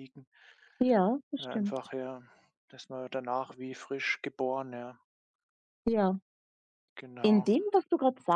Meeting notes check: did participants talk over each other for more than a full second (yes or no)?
no